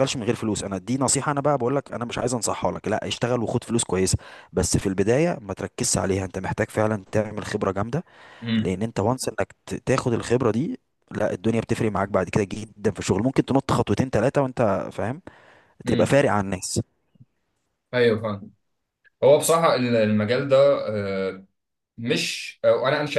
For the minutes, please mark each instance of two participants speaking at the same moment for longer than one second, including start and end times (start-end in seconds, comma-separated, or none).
none